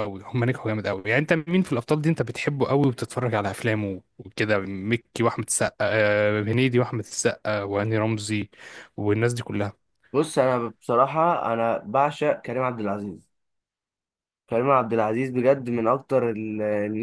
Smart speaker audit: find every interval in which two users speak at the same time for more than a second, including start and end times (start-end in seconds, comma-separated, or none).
none